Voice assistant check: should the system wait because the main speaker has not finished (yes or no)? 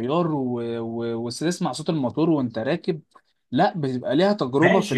no